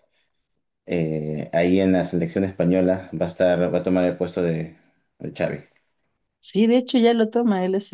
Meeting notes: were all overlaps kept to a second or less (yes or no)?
yes